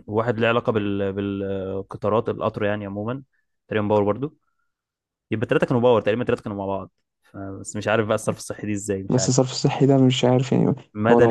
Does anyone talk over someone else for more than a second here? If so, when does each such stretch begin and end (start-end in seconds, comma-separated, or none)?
none